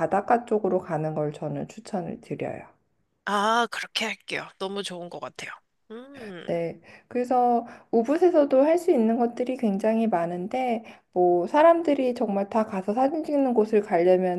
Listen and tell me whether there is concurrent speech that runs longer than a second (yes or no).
no